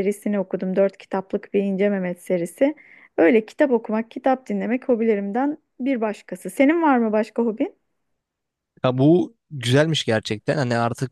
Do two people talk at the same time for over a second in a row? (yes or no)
no